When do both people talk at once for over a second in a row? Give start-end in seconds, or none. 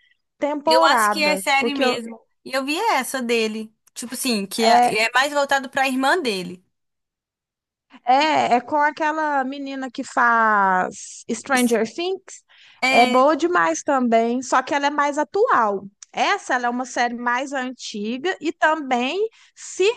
0.7-2.0